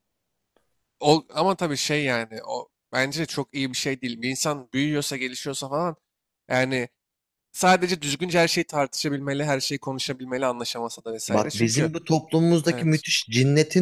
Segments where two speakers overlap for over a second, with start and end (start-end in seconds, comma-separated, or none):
none